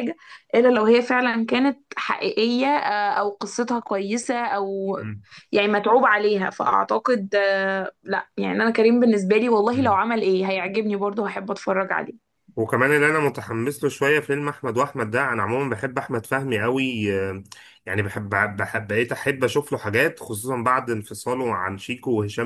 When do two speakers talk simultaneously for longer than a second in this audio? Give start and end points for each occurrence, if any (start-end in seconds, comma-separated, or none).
none